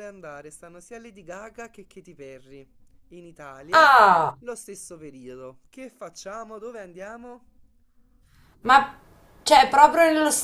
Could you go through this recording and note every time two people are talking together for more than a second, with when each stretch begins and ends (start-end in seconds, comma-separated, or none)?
none